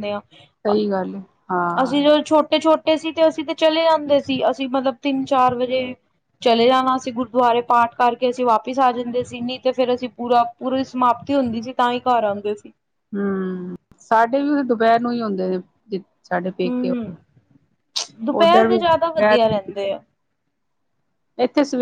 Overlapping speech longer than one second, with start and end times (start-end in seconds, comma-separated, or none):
none